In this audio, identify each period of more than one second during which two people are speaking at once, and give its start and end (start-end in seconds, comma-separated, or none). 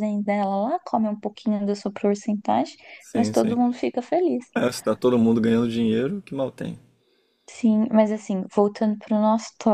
none